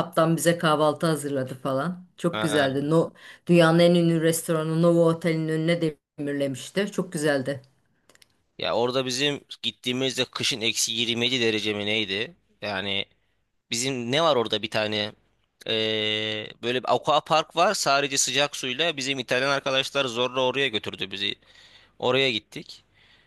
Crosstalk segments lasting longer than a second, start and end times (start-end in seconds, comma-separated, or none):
none